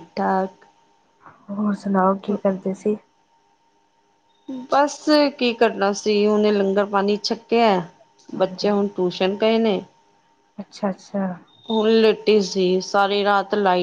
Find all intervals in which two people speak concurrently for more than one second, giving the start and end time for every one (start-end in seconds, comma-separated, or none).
none